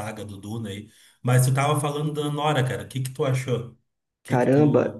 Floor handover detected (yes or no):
yes